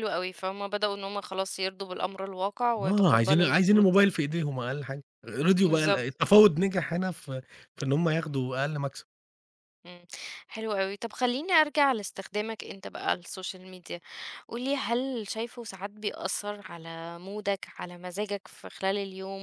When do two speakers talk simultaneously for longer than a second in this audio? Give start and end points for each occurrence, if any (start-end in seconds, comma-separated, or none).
2.8-4.1